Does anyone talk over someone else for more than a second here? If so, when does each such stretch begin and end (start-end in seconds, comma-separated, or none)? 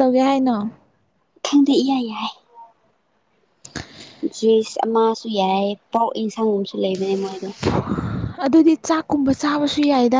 none